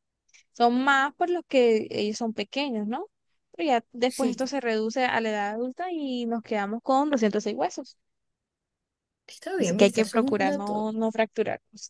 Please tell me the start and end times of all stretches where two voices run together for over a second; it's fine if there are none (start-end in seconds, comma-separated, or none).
9.6-10.9